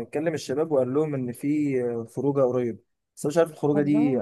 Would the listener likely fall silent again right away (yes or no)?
yes